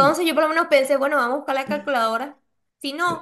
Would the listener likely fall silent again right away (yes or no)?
no